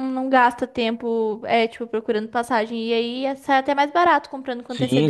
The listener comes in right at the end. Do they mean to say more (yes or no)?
yes